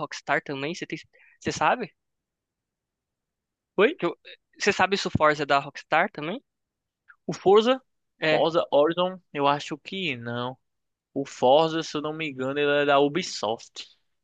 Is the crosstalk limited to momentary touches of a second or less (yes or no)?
yes